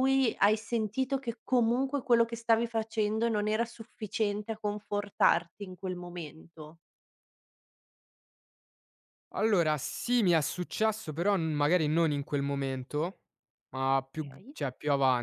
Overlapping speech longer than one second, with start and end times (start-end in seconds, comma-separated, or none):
none